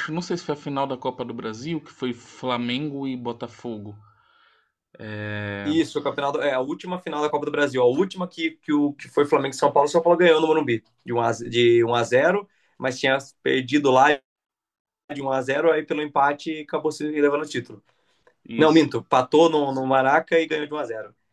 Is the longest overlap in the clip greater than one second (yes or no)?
no